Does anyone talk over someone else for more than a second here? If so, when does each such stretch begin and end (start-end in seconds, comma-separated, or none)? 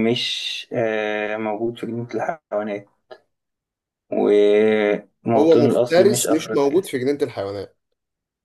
5.3-6.9